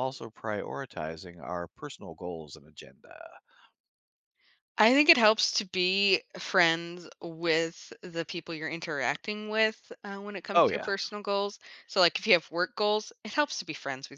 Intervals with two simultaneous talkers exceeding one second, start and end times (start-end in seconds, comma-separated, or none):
none